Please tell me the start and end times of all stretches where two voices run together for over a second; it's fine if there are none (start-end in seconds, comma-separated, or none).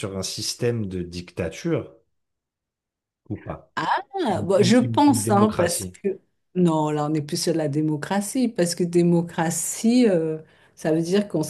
4.4-6.0